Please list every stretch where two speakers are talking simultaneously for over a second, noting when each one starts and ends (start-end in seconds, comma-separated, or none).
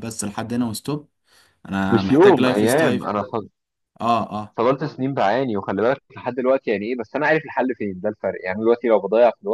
1.9-3.1